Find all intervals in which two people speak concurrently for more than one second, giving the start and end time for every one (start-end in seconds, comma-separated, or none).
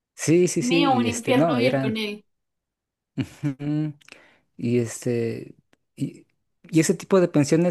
0.6-2.0